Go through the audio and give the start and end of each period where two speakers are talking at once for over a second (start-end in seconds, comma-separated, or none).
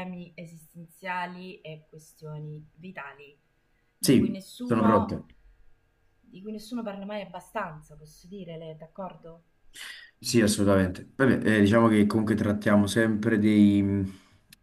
4.0-5.2